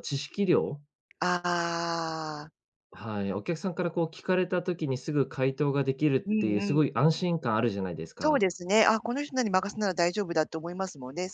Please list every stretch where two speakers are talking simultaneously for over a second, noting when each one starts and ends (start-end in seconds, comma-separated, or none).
none